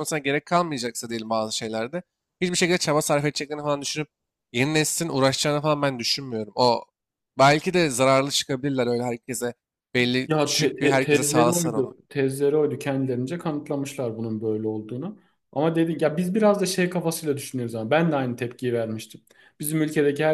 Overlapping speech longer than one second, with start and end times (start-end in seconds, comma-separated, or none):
10.3-11.9